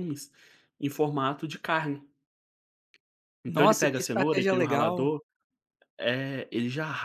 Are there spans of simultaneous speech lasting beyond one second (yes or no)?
yes